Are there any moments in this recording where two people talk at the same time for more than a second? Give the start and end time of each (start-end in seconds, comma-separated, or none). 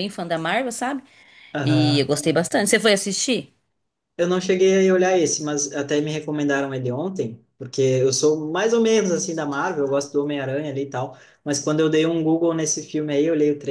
none